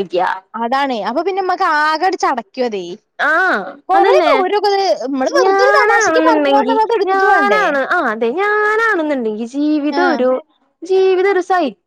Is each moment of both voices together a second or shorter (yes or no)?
no